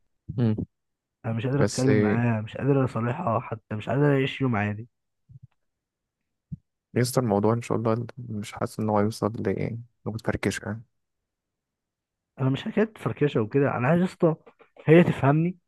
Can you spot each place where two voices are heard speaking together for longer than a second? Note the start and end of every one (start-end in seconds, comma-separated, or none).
none